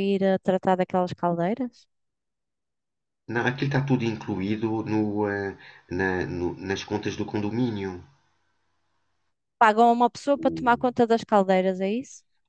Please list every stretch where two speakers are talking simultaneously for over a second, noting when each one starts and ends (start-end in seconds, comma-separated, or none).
none